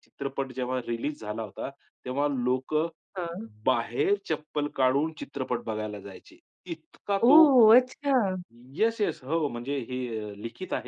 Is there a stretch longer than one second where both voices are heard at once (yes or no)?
no